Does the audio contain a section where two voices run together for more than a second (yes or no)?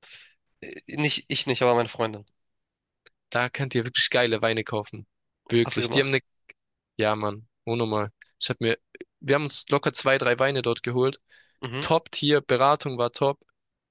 no